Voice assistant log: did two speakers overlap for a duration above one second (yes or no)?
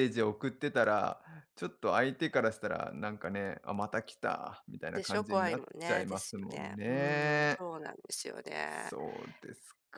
yes